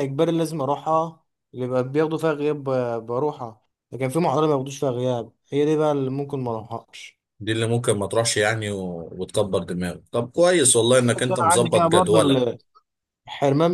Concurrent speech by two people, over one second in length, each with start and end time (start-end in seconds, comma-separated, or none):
10.9-12.6